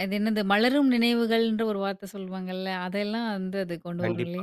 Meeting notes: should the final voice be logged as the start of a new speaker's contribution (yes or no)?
yes